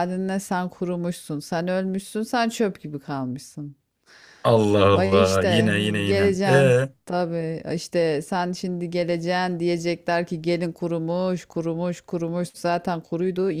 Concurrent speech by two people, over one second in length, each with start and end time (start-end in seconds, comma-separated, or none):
4.9-6.9